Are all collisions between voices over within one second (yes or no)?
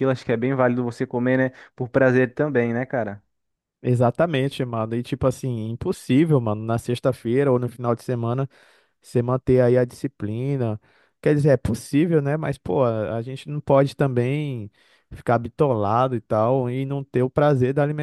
yes